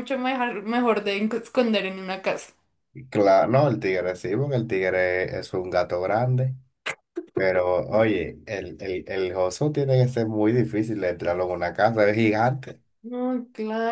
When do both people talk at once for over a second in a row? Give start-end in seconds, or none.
none